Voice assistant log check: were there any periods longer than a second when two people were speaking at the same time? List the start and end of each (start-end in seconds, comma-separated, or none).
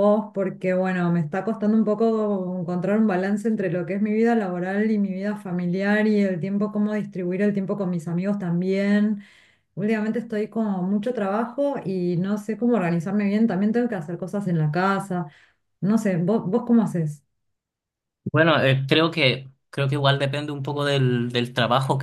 none